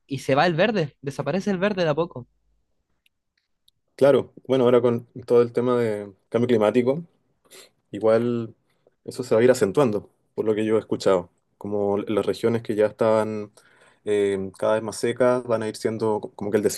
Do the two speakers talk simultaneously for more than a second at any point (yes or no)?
no